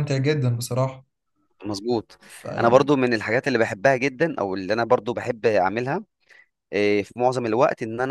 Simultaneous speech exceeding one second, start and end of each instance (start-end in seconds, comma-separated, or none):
none